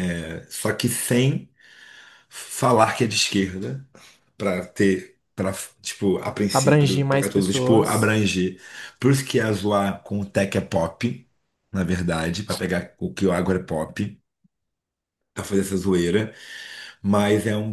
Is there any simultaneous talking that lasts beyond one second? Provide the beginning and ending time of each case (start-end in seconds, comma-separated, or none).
6.5-8.1